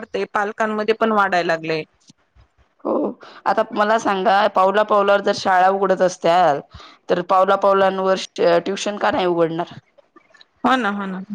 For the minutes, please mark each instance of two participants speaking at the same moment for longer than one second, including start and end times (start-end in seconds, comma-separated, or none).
none